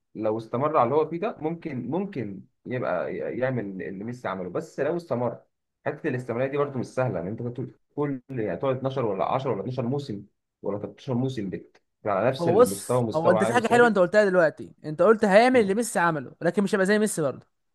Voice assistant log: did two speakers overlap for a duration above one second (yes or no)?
yes